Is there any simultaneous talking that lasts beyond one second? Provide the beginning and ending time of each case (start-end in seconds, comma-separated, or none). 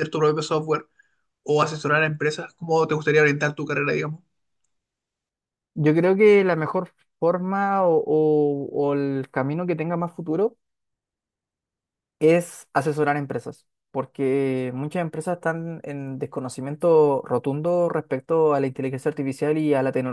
none